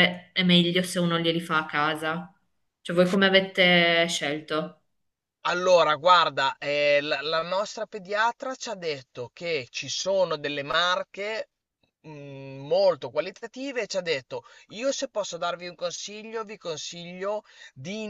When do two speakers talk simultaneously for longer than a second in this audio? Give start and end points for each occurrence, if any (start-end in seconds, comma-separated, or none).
none